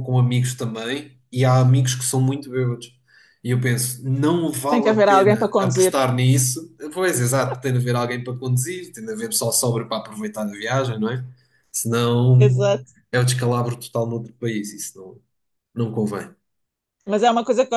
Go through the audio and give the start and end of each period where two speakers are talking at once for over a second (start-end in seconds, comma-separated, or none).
4.7-5.9